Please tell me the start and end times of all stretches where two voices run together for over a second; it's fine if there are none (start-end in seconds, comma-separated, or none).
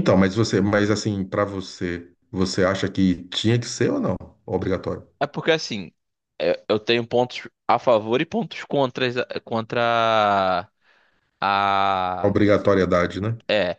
none